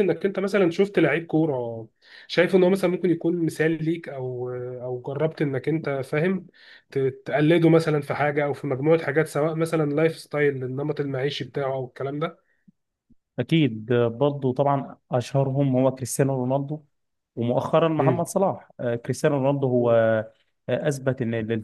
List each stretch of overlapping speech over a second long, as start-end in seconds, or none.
none